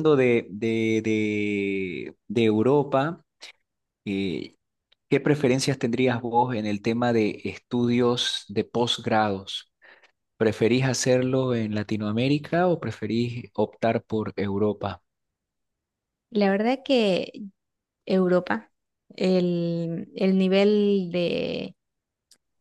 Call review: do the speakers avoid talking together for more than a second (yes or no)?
yes